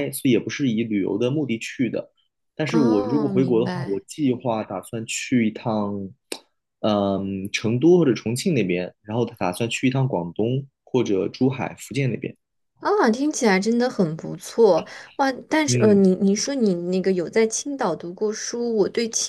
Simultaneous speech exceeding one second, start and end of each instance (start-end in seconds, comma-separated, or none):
2.6-4.0